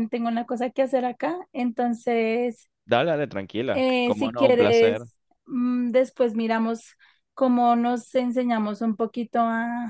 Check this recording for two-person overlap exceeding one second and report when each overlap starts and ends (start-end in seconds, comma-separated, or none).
3.7-5.1